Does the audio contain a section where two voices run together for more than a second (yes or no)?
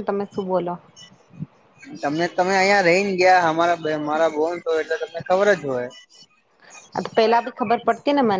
no